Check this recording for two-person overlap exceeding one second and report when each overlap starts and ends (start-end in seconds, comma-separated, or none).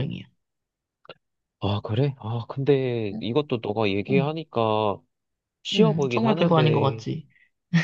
5.8-7.0